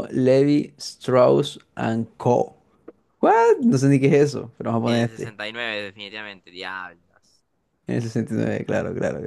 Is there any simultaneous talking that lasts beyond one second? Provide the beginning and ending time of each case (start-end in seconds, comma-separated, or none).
none